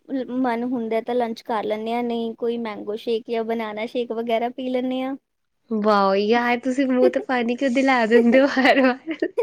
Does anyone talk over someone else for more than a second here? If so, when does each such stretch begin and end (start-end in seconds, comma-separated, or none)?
none